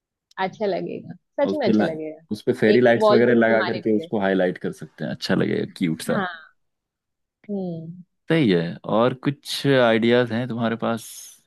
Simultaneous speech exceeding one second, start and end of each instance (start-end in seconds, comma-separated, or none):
2.7-4.1